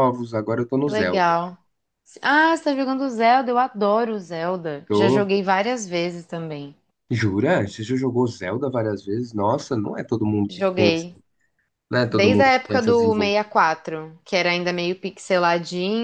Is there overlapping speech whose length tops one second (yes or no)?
yes